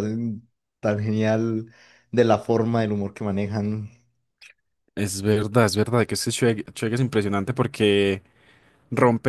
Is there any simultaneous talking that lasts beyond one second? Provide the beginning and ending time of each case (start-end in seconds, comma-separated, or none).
none